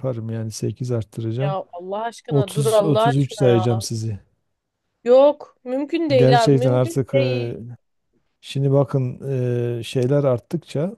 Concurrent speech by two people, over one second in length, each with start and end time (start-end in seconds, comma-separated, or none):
2.3-3.6, 6.2-7.5